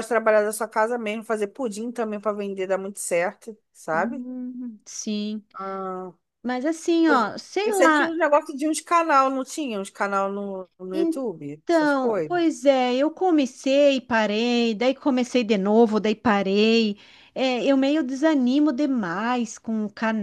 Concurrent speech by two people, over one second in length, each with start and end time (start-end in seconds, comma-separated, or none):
10.9-12.4